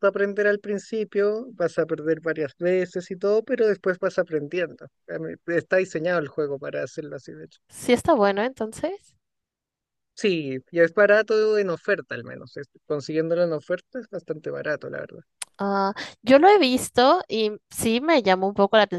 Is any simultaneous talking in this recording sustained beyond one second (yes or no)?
no